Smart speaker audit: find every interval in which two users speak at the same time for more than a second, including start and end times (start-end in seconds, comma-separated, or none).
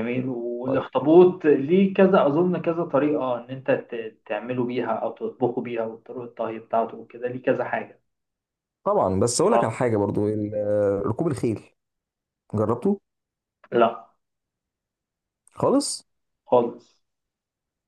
none